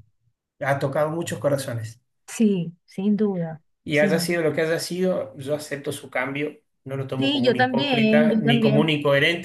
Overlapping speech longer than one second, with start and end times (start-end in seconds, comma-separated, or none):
7.2-8.9